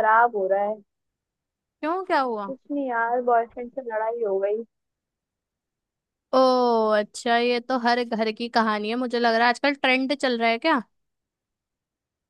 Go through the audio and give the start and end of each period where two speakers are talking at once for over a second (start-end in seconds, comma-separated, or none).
none